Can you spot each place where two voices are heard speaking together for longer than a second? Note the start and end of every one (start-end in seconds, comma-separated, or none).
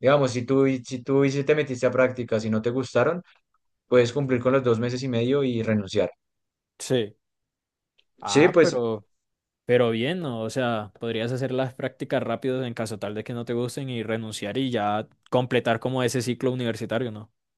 none